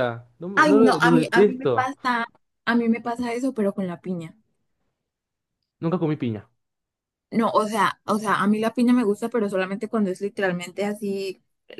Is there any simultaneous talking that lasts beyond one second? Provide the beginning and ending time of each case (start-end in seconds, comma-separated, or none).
0.6-1.9